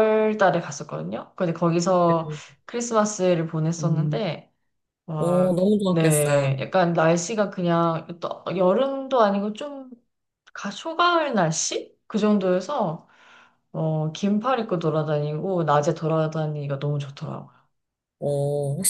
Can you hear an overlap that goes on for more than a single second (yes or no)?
yes